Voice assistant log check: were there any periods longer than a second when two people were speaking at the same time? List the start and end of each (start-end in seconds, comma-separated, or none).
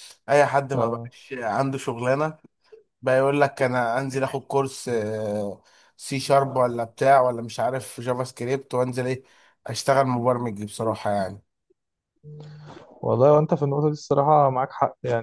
none